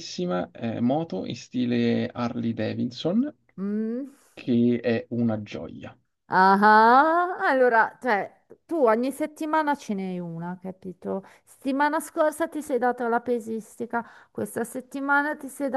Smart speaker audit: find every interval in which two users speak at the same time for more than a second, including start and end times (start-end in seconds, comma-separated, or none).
none